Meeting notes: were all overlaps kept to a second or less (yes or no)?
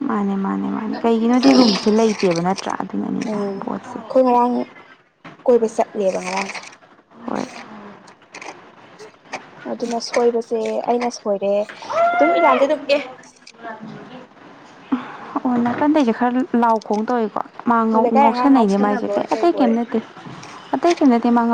no